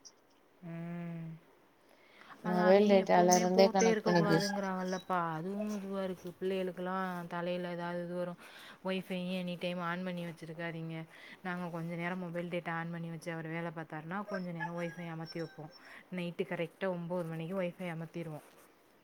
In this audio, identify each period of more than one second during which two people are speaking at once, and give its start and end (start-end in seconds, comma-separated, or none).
2.5-4.5